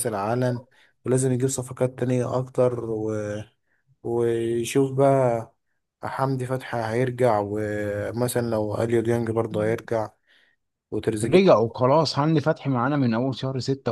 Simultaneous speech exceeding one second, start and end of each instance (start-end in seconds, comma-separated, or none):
none